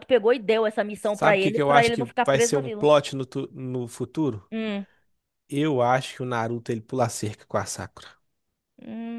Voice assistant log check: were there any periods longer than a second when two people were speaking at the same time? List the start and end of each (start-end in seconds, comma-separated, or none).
1.0-2.9